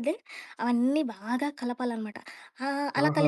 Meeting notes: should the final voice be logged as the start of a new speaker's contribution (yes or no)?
no